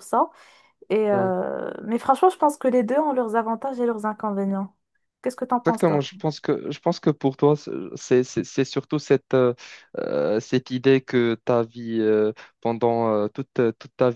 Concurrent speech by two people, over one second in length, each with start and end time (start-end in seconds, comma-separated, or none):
none